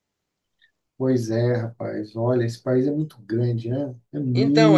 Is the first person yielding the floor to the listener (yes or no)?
yes